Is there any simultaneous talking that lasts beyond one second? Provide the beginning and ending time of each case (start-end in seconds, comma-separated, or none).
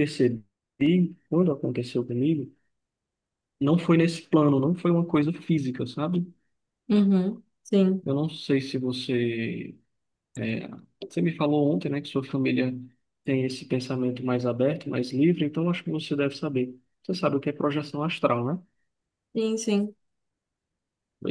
none